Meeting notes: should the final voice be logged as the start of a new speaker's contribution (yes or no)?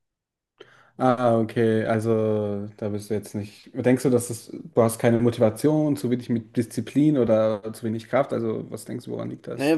yes